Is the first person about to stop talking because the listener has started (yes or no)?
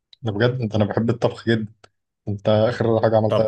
no